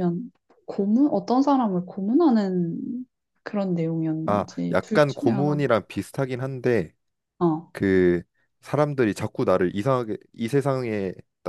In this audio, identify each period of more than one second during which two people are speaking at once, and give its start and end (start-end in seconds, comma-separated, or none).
4.3-5.7